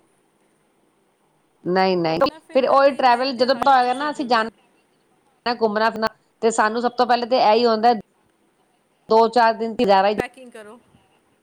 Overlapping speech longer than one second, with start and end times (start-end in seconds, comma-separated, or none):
2.1-4.5